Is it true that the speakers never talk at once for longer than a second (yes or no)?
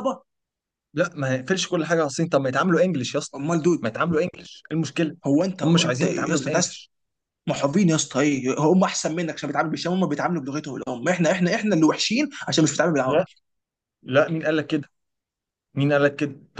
no